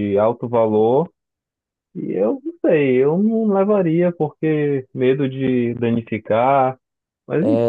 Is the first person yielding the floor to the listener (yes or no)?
yes